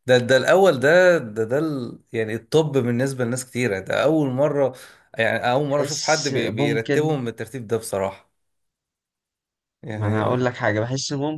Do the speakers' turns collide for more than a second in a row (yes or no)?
yes